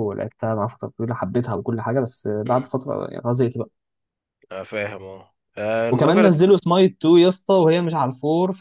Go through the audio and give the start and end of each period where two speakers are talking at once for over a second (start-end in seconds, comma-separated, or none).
none